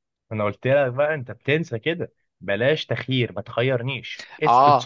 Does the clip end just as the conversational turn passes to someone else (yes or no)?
yes